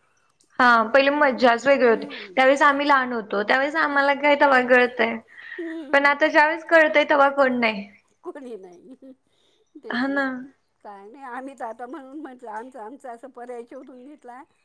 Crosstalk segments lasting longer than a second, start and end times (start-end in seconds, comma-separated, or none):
none